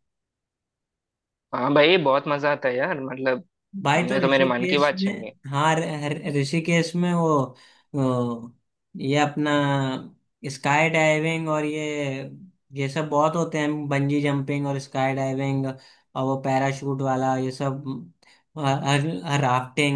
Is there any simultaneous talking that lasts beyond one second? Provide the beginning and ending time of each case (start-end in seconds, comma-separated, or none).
3.9-5.3